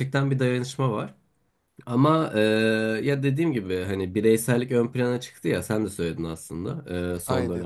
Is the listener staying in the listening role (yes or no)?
yes